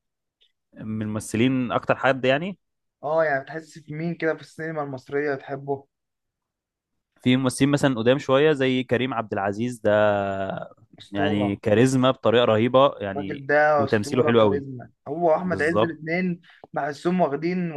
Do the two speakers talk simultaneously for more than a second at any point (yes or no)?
yes